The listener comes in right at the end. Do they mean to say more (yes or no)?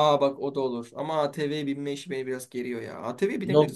yes